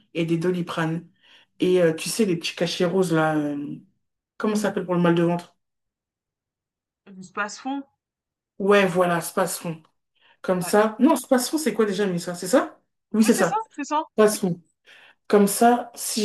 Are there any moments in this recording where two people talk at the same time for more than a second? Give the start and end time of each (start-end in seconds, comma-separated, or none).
none